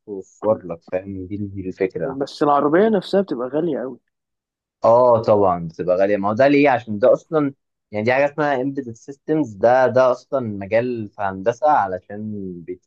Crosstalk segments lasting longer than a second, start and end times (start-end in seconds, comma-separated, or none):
none